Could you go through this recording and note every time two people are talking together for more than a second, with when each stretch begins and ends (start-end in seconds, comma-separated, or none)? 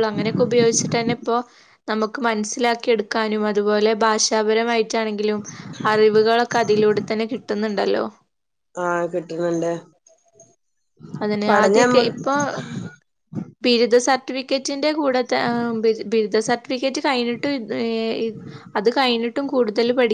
none